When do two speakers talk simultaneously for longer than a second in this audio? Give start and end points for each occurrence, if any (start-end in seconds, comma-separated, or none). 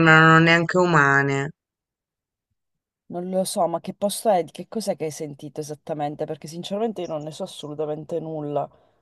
none